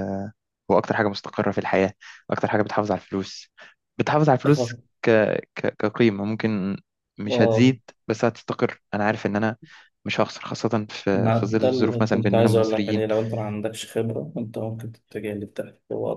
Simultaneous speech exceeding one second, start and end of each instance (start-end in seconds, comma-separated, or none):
11.1-13.0